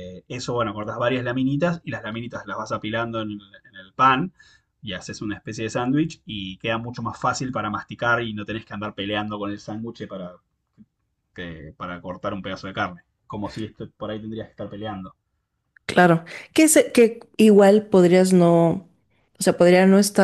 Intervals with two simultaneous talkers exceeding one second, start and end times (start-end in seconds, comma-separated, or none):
none